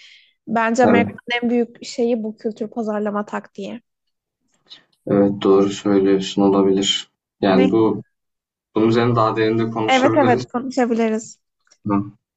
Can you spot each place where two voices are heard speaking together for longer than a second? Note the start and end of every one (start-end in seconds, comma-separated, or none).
none